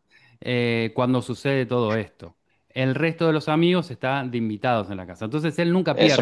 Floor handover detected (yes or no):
yes